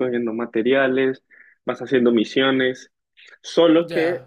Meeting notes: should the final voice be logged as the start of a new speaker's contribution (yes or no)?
no